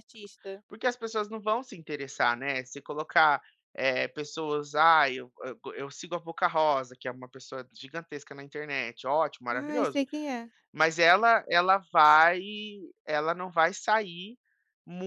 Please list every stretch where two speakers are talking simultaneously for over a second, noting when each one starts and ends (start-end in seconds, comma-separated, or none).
none